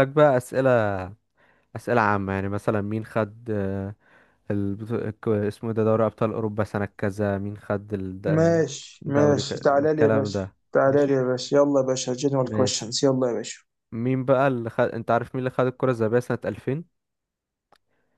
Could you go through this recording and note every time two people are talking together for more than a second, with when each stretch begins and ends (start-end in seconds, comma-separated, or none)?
9.1-11.2